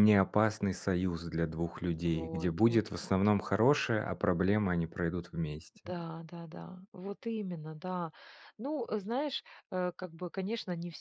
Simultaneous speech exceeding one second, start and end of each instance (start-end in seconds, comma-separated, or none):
2.0-3.3